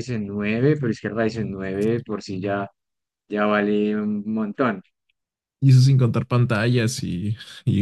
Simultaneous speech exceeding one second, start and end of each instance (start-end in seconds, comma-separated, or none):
none